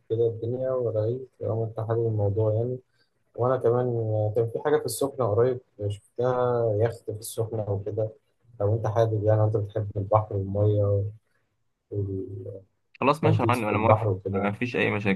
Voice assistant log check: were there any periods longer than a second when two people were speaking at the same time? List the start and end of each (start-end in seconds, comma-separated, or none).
13.2-14.5